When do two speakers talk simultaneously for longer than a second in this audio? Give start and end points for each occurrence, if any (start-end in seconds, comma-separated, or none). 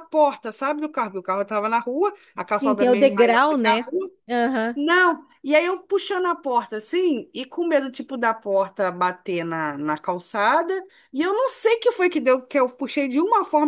2.4-3.9